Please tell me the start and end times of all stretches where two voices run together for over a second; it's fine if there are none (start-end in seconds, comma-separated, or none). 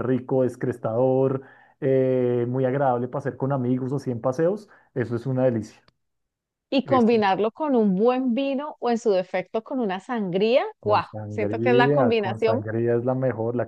10.8-12.6